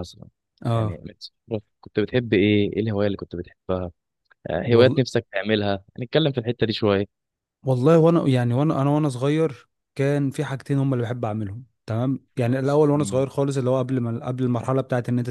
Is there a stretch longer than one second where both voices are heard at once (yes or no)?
no